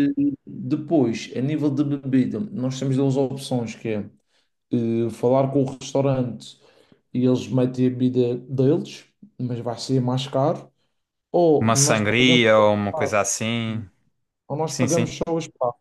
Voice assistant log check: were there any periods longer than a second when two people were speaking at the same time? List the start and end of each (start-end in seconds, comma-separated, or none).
11.6-13.1